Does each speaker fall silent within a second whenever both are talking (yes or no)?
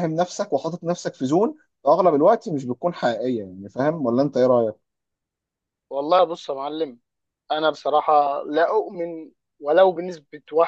yes